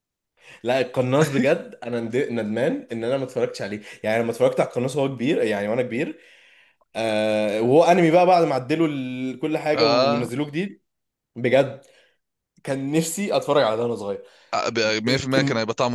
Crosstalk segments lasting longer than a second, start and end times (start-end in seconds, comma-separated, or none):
none